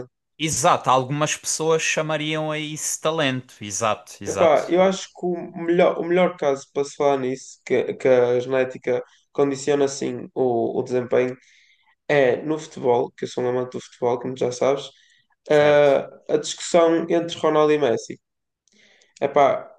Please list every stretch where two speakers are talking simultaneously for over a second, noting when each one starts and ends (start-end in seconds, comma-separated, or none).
none